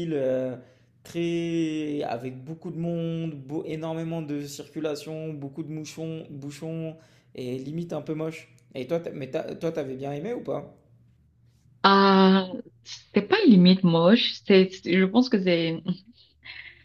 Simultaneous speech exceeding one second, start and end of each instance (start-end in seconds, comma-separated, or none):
none